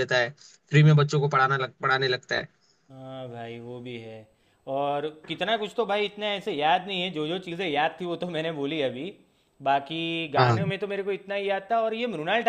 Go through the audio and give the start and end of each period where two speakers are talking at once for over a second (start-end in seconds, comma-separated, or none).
none